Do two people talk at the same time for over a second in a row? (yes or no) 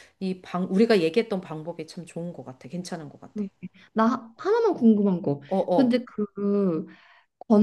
no